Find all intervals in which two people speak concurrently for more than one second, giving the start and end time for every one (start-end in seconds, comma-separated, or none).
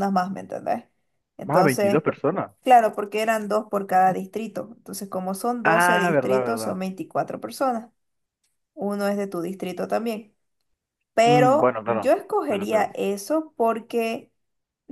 5.6-6.8, 11.2-12.9